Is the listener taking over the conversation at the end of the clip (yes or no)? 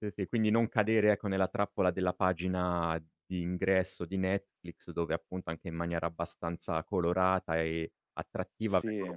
no